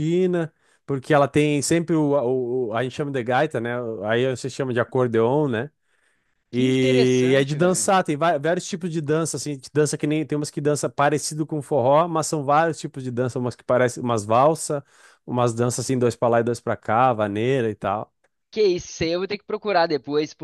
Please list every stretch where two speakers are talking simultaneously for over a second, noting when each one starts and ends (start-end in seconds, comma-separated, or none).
6.5-7.9